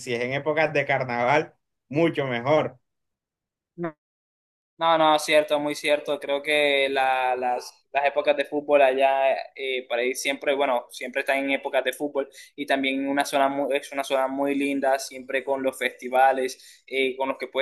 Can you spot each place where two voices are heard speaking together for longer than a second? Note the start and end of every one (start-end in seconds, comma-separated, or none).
none